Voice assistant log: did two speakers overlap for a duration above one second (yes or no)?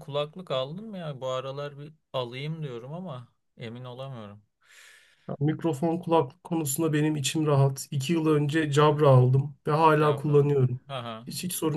no